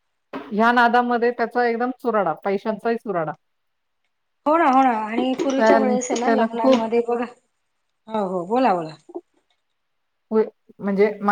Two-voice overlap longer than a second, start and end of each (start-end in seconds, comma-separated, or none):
5.6-6.9